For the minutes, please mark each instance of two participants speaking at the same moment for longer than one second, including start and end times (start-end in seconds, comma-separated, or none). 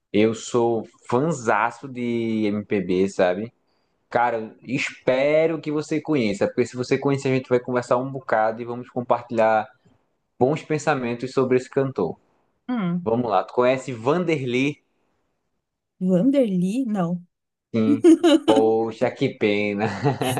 none